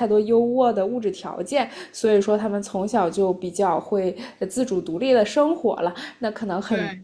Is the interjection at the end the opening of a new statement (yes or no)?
no